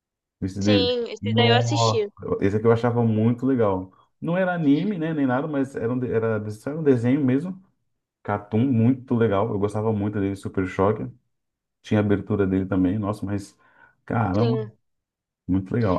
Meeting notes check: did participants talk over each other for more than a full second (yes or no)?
yes